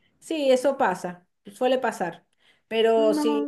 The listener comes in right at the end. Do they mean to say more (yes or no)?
no